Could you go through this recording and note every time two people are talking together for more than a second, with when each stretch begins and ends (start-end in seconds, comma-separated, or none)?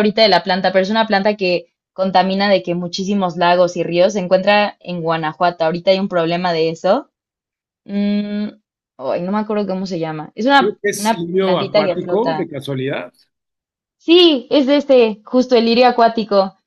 10.6-12.5